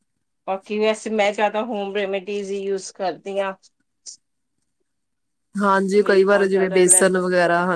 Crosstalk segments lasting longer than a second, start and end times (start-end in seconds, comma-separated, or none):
5.8-7.1